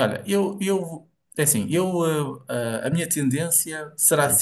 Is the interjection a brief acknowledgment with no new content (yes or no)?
yes